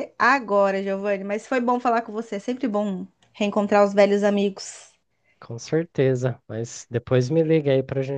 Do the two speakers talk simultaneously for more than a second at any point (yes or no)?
no